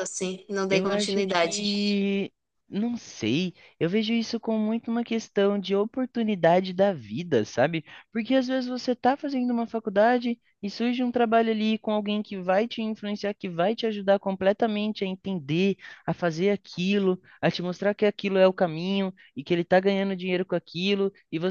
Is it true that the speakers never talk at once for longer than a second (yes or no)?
no